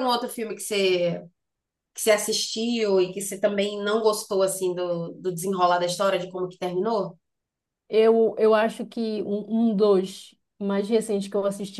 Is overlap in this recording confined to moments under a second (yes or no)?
yes